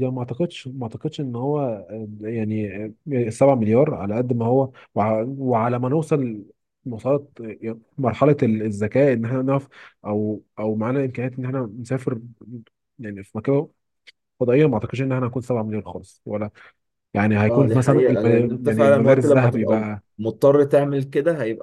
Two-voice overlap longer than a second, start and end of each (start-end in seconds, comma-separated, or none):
17.5-20.0